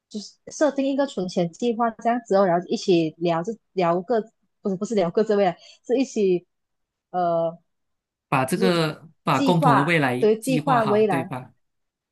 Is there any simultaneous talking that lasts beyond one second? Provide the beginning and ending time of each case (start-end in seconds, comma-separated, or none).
9.3-11.3